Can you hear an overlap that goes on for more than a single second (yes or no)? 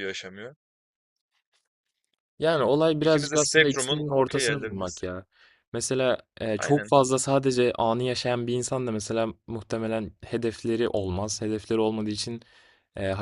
yes